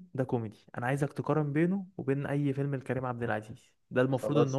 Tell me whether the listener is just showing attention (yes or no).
yes